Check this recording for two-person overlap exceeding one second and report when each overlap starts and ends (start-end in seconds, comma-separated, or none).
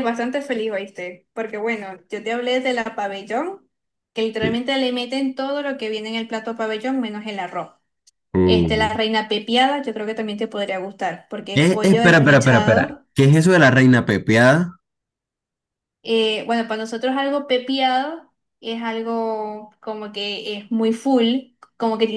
11.5-13.1